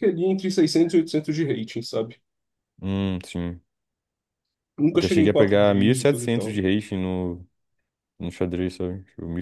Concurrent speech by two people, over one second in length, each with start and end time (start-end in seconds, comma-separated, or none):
5.0-6.6